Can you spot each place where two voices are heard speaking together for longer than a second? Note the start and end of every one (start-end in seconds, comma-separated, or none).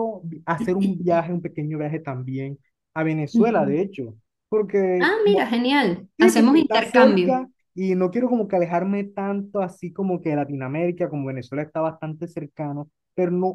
6.2-7.4